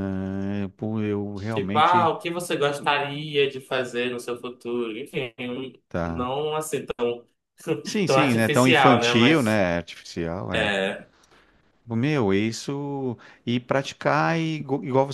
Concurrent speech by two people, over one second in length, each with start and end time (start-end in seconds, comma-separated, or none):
8.1-9.6